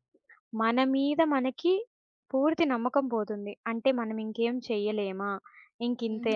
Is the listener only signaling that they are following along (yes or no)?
no